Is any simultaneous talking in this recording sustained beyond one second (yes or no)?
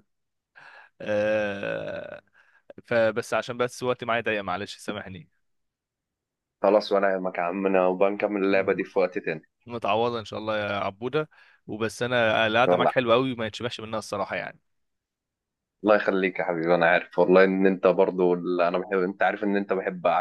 no